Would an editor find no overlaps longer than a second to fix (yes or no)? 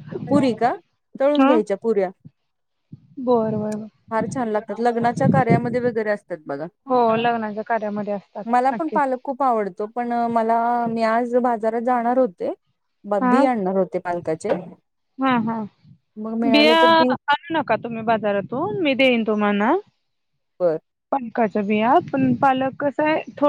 yes